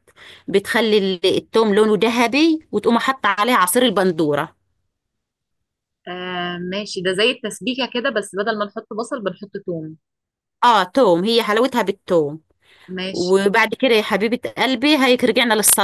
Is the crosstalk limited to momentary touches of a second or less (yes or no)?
yes